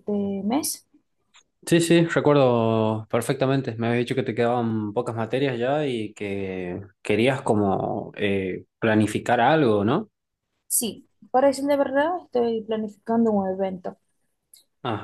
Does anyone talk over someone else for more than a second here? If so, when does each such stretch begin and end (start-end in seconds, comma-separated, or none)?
none